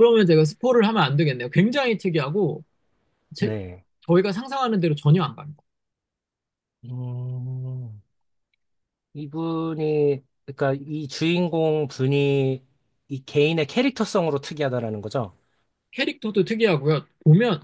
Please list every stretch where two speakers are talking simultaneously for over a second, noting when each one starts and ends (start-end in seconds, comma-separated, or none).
none